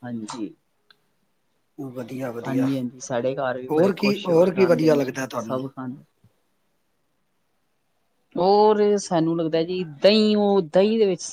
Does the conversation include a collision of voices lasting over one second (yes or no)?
yes